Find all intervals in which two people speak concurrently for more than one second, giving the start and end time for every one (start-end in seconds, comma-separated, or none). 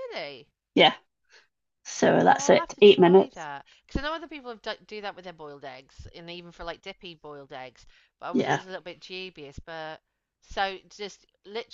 2.2-3.5